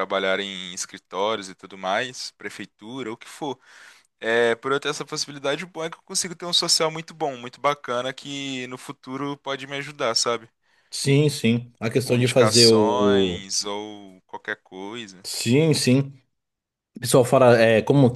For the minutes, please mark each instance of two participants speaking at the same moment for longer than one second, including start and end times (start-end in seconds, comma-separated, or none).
12.0-13.4